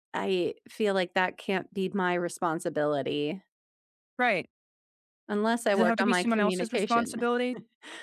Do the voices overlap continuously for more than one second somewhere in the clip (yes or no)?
yes